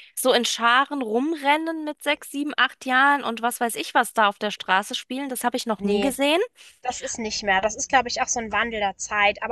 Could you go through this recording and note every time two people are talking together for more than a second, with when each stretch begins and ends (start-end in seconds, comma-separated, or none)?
none